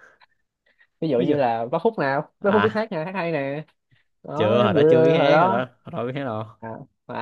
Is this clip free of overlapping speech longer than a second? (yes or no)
no